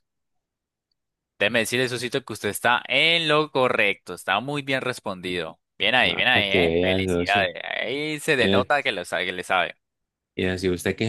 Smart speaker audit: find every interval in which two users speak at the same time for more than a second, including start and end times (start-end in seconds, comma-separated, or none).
6.0-7.5